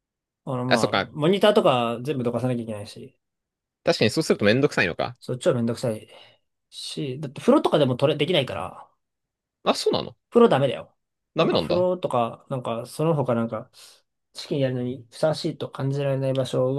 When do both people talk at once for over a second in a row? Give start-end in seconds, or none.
none